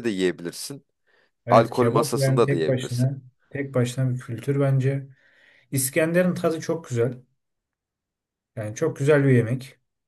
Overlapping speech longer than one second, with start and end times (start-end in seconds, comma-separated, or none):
1.5-3.1